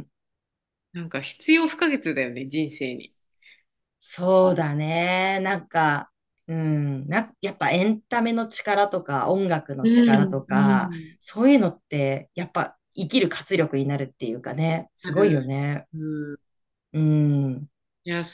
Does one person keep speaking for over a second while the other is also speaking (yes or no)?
yes